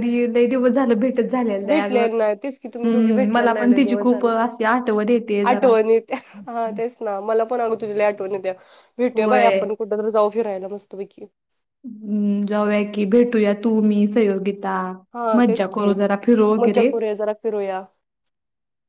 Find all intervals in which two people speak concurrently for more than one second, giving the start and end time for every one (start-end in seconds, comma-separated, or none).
1.7-4.3